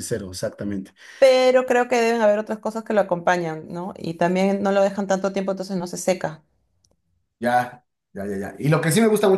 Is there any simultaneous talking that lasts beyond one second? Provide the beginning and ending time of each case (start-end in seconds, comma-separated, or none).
none